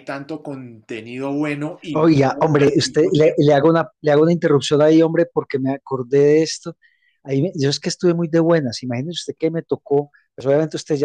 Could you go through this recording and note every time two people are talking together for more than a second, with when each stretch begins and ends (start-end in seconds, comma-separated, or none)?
1.9-3.6